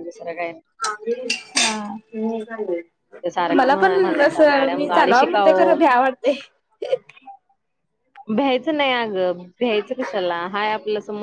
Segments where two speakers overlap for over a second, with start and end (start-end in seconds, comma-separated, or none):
3.6-5.8